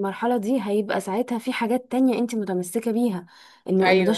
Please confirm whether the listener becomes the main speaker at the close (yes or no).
no